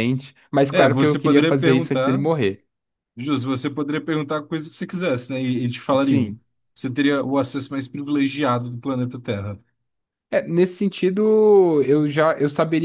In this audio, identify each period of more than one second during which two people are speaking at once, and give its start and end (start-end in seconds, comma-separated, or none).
0.7-2.2